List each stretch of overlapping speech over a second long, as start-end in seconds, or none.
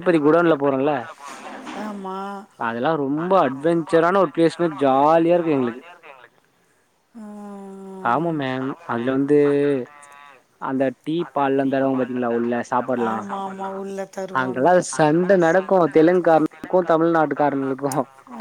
14.4-17.9